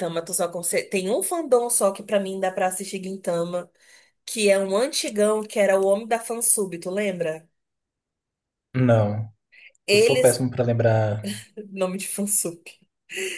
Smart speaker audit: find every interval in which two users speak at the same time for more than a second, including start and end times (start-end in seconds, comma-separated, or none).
none